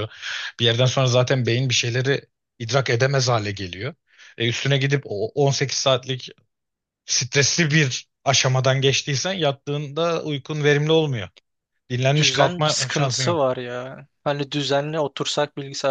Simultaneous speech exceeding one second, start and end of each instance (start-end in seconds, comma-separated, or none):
12.2-13.5